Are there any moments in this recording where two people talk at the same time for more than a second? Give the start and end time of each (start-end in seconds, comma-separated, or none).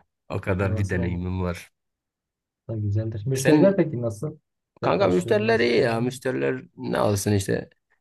4.8-6.1